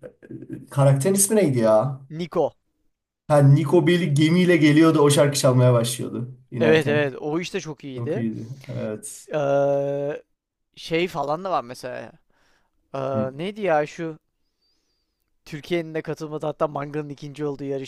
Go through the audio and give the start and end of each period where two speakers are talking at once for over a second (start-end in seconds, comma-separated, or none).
none